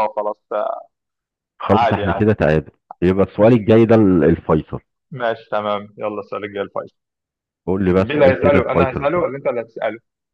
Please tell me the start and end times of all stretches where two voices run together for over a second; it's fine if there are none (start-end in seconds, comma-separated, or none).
8.0-9.2